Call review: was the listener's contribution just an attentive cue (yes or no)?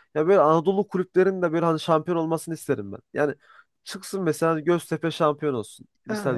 yes